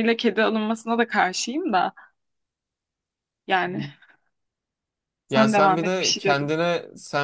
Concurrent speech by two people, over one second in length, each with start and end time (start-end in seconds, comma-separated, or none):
5.3-6.5